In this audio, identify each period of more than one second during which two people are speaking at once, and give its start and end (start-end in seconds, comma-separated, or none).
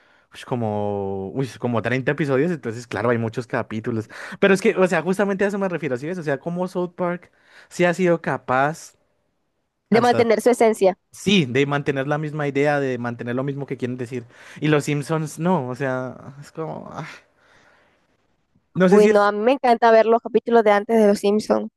none